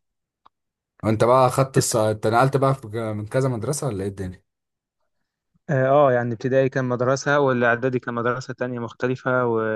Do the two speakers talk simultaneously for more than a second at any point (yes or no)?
no